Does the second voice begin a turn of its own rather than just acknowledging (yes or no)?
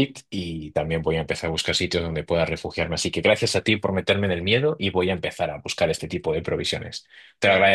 yes